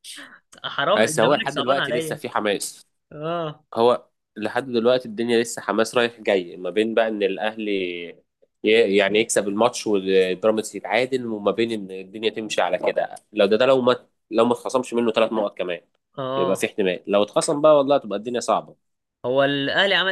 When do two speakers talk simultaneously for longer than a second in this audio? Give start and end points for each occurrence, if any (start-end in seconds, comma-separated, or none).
1.0-2.2